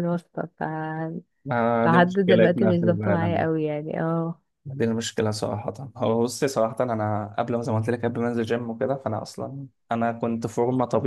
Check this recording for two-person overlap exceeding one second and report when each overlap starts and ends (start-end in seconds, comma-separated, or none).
1.9-3.5